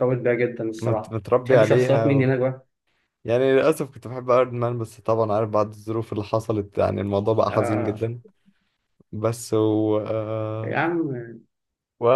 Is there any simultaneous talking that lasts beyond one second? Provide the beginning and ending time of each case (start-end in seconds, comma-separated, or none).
0.8-2.3